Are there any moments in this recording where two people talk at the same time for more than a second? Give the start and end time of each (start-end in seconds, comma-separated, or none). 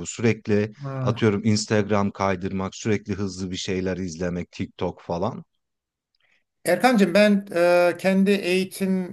none